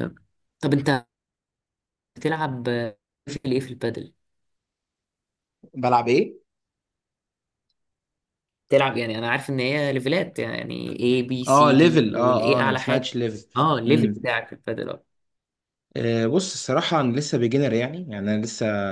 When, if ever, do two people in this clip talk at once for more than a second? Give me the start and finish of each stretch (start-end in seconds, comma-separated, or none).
11.5-13.1